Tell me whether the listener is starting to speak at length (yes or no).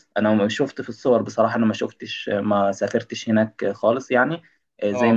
no